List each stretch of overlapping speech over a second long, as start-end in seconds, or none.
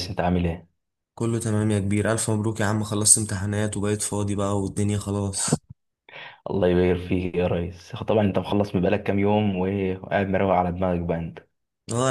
none